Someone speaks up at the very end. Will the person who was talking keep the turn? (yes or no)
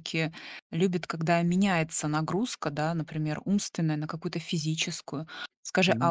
yes